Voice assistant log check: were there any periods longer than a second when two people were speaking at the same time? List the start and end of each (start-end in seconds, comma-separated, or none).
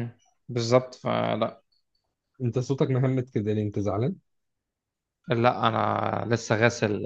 none